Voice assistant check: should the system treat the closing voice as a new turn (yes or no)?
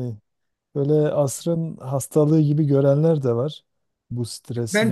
yes